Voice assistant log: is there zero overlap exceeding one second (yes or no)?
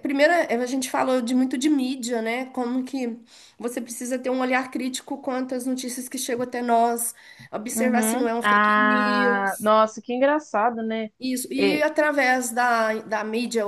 no